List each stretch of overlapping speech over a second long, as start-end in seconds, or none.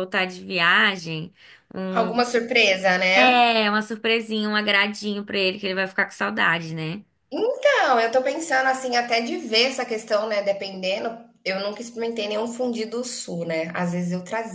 none